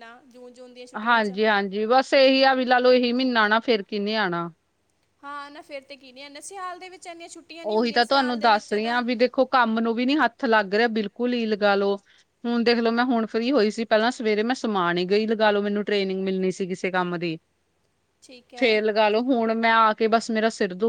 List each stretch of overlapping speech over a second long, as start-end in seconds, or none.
7.7-9.0